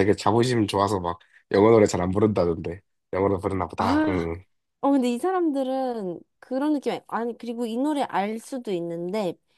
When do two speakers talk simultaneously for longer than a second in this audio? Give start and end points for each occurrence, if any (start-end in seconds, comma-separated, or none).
none